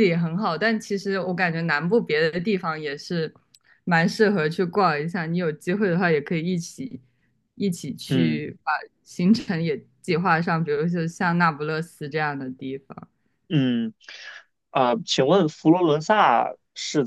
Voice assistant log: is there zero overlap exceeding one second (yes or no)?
yes